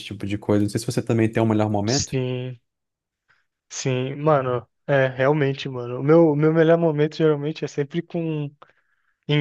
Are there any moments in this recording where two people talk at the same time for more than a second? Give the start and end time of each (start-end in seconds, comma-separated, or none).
none